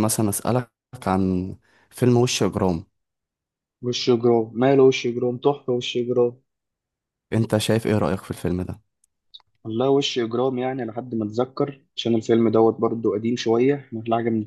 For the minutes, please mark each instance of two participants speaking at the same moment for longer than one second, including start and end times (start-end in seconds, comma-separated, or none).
none